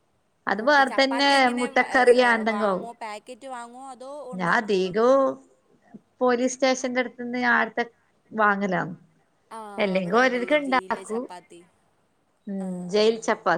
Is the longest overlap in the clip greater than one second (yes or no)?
yes